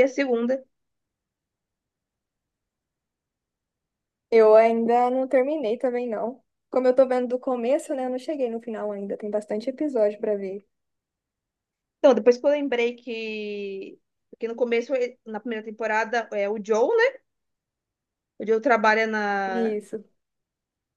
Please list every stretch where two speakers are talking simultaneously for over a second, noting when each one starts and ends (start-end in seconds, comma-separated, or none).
none